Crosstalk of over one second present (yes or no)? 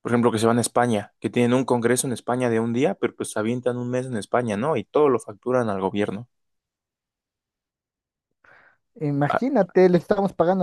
no